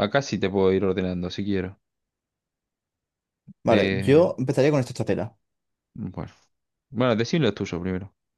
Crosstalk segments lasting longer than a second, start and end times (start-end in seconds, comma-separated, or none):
none